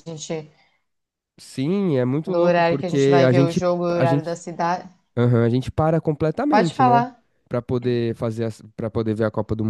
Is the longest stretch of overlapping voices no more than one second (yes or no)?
no